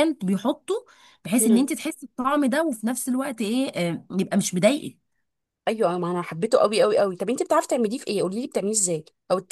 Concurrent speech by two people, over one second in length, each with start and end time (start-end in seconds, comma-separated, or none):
none